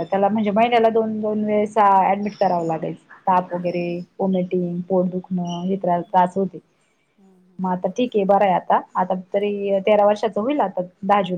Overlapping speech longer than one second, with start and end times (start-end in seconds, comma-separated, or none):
none